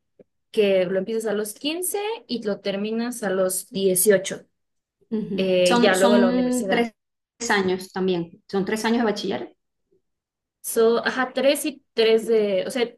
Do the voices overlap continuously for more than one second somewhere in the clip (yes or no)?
yes